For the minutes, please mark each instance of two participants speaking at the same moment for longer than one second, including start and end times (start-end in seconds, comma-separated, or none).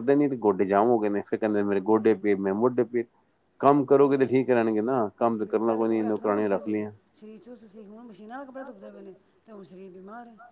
5.5-6.8